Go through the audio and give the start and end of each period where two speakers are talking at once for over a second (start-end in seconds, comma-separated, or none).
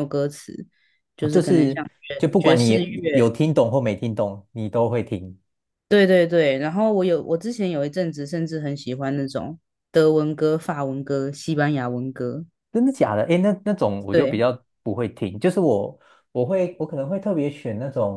1.2-2.8